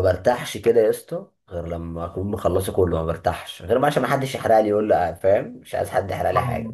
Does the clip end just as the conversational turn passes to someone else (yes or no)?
yes